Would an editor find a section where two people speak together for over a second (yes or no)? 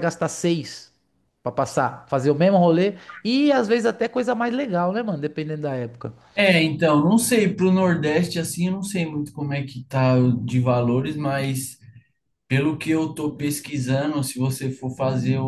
no